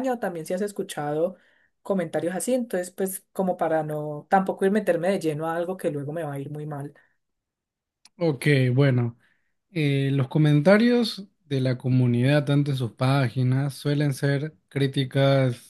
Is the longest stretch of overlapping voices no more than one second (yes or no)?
yes